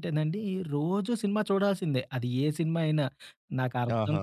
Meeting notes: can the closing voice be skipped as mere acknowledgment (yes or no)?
yes